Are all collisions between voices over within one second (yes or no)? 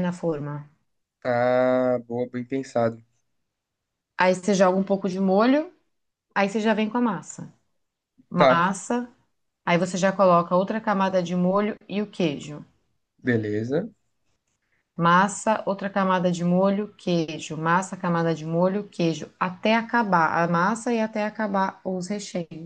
yes